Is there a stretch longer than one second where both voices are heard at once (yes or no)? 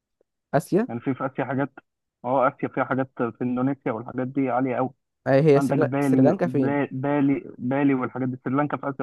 yes